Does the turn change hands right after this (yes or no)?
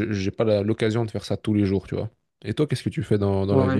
yes